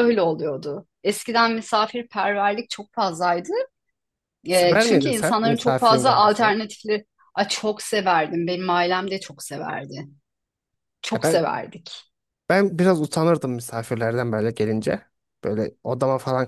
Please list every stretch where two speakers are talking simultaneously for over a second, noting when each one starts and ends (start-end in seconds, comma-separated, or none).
4.5-6.5